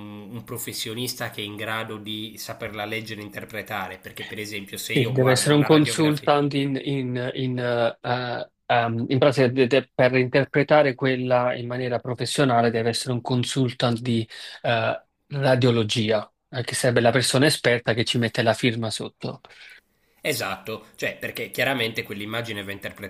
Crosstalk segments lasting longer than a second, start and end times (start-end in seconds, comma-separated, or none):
4.9-6.3